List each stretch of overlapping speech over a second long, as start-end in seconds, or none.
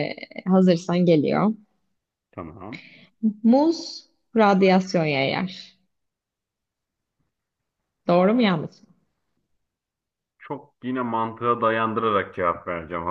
none